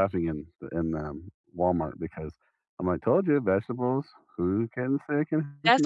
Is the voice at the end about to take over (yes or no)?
yes